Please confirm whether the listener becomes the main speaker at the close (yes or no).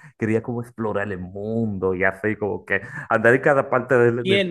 yes